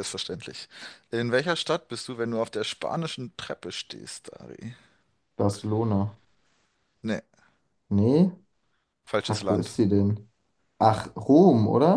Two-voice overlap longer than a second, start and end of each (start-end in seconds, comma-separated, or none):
none